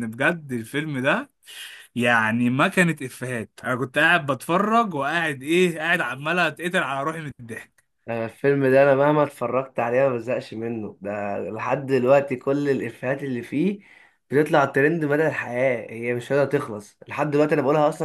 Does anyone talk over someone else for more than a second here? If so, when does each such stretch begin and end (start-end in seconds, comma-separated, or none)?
none